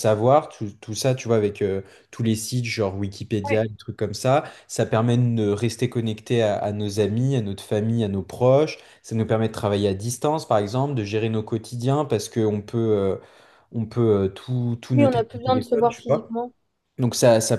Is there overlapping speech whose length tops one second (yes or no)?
yes